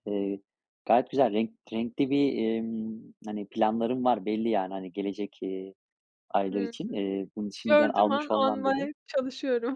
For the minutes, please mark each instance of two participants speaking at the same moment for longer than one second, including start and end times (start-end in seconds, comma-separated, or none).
7.6-8.9